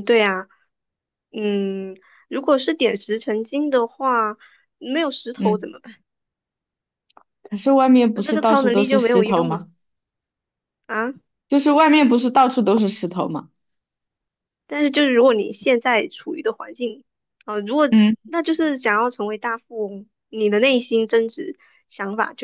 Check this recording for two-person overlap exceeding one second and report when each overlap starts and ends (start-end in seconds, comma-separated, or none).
8.1-9.6